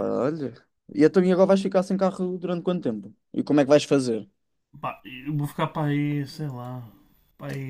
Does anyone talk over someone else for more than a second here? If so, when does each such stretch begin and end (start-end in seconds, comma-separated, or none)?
none